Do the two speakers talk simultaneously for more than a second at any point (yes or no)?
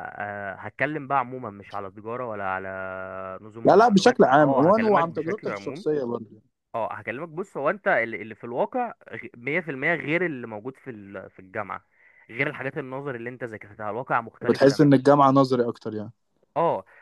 yes